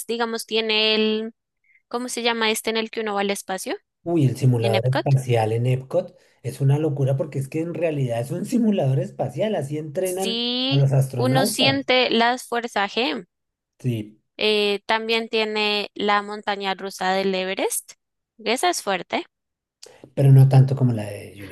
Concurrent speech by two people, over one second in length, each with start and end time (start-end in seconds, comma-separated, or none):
10.0-11.9